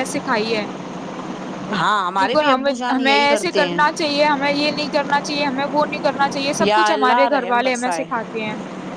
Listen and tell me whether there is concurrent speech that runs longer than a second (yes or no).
yes